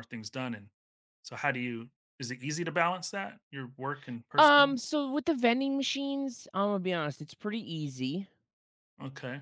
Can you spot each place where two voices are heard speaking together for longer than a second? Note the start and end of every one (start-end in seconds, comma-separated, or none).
none